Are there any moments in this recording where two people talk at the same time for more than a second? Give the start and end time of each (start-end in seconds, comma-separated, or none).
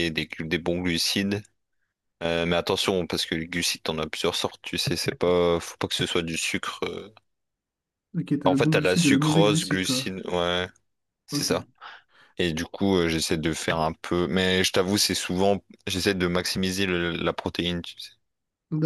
8.4-10.1